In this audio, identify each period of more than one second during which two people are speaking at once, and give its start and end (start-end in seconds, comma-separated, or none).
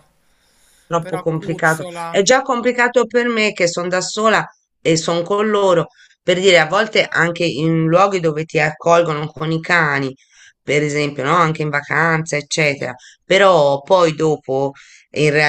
1.0-2.3